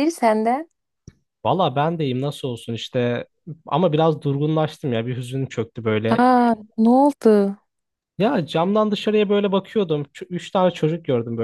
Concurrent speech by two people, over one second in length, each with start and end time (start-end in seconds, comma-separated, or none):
none